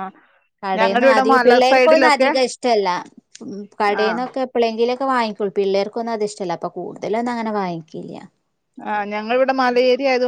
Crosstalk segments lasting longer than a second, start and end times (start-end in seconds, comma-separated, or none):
0.8-2.3